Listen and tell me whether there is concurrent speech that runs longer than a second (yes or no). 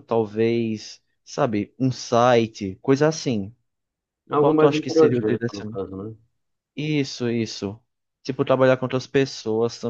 yes